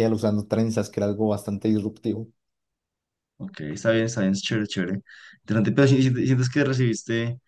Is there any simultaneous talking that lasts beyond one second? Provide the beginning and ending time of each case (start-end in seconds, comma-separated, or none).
none